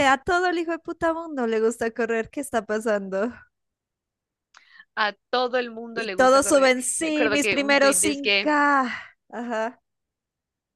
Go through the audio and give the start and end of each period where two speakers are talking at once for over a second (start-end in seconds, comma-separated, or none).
5.9-8.5